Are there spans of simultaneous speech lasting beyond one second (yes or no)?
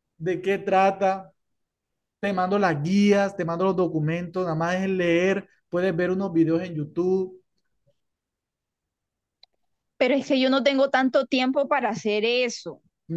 no